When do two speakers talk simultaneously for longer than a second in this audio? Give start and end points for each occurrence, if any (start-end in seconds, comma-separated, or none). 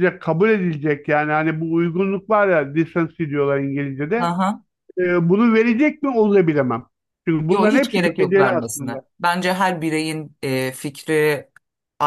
7.5-9.0